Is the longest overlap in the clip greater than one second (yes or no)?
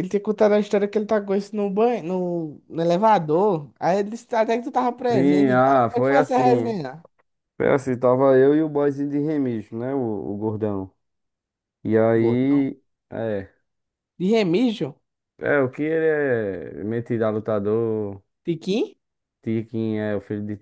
yes